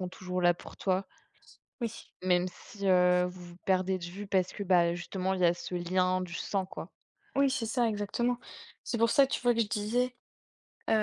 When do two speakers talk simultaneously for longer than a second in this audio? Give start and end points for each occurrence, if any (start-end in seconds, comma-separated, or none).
none